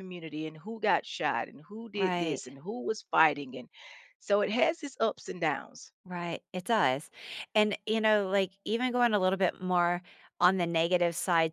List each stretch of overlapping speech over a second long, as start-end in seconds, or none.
none